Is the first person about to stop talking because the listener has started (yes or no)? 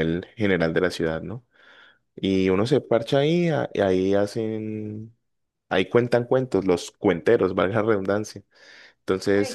yes